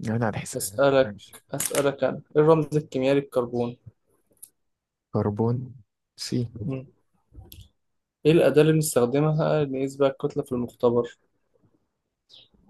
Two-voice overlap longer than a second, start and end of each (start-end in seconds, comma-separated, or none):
none